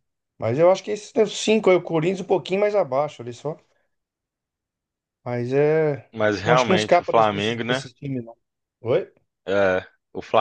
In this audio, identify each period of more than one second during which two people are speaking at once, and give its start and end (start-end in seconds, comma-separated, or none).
6.2-7.8